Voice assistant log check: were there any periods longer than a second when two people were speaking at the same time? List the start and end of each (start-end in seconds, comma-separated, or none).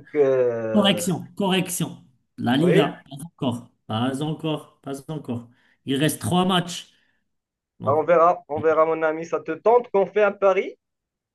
none